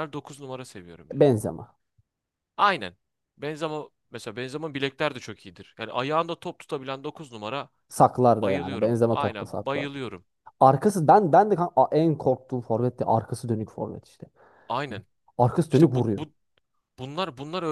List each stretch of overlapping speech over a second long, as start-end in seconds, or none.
8.4-9.9